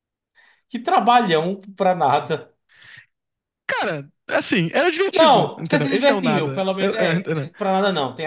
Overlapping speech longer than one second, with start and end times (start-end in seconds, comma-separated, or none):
5.1-7.5